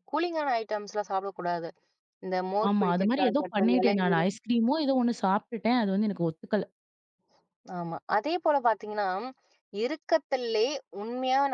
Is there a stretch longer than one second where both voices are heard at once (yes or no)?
yes